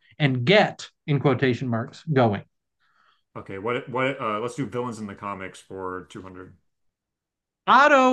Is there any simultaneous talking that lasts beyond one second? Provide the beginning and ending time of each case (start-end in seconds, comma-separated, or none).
none